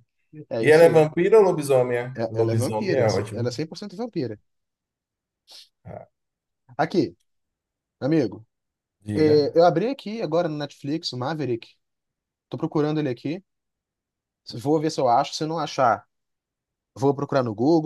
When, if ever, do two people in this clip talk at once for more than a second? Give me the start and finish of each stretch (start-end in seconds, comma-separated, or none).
2.1-3.5